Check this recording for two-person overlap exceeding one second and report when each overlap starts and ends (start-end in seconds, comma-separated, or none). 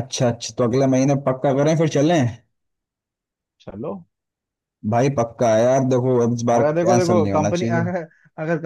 6.5-7.9